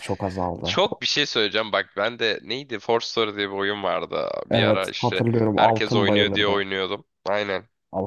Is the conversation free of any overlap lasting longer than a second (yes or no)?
no